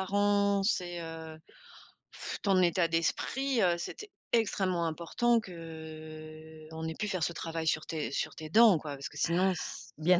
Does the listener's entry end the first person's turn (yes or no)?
yes